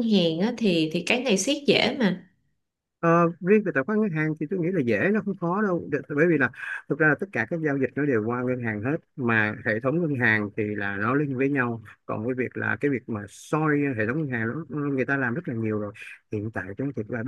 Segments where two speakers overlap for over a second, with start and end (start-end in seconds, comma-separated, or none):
none